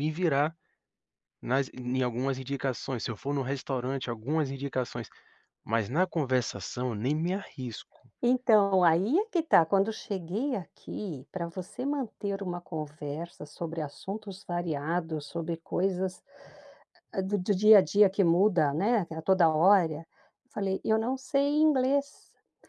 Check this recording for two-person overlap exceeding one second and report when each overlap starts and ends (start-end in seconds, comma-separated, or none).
none